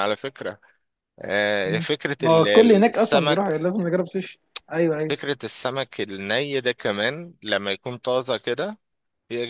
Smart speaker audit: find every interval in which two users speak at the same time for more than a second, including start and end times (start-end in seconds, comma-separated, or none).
1.6-3.7